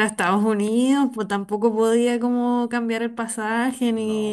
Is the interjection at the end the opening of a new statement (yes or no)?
no